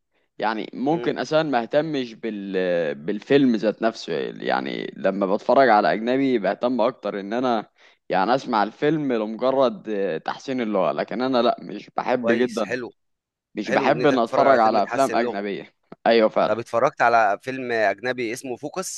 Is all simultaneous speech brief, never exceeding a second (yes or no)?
no